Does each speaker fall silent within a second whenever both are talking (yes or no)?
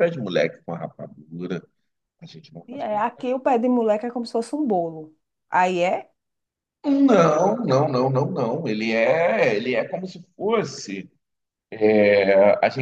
yes